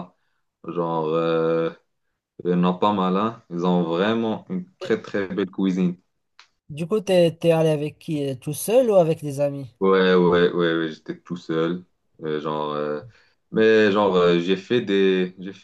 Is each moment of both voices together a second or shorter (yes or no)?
yes